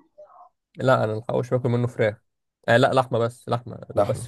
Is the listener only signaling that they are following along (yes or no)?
yes